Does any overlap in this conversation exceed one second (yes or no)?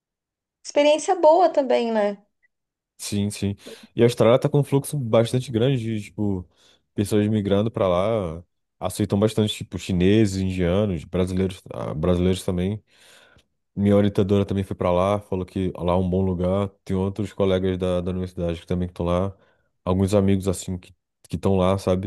no